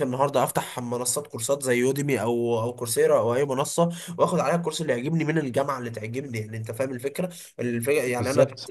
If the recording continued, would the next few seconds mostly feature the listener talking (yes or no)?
no